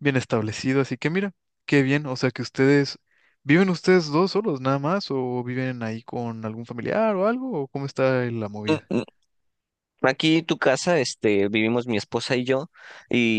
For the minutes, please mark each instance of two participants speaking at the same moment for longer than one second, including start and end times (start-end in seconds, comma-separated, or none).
none